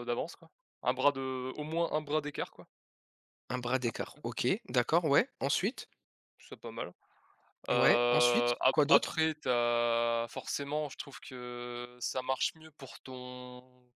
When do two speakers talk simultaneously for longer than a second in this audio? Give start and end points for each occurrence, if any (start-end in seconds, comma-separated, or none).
7.8-9.2